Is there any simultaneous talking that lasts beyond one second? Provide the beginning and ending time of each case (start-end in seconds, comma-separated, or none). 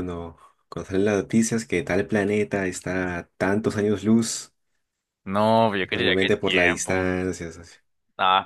5.8-7.1